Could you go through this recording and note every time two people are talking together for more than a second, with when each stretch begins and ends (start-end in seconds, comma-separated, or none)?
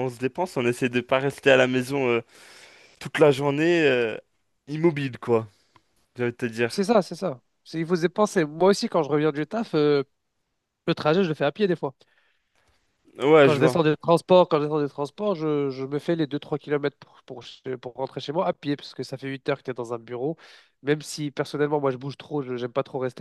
none